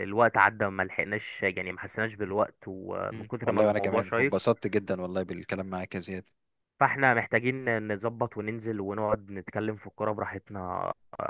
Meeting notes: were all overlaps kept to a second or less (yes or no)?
no